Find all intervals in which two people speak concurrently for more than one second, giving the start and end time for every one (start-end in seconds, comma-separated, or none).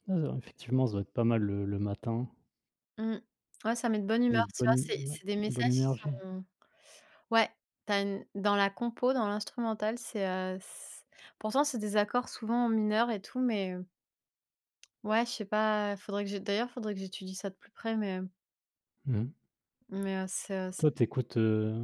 4.3-6.2